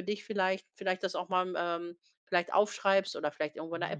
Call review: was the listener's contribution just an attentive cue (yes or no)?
yes